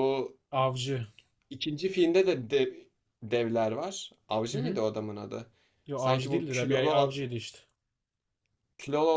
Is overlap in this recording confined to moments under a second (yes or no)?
no